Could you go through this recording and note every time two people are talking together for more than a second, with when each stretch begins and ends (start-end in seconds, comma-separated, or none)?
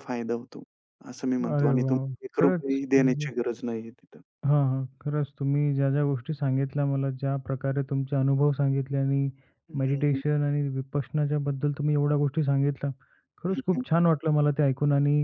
1.5-3.3